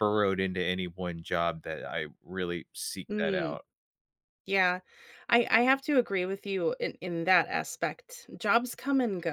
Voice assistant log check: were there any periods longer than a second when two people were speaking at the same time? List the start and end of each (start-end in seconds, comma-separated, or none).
none